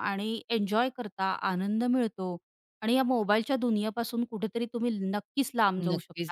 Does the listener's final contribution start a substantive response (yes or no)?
yes